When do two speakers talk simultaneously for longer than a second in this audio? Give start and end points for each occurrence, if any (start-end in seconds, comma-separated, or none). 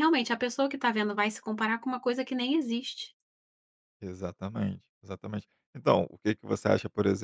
none